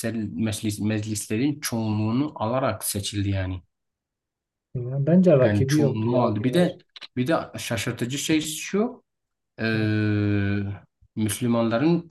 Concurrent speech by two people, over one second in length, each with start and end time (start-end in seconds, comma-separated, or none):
5.4-6.8